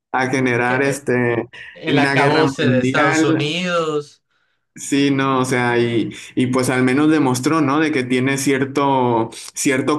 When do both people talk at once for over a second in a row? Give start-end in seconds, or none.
1.9-3.5